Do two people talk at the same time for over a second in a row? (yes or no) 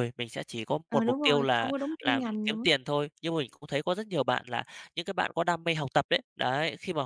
yes